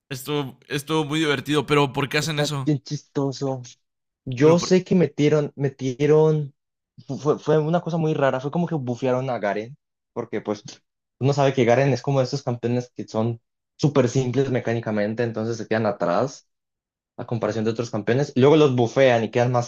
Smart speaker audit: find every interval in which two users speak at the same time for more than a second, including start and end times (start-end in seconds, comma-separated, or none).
none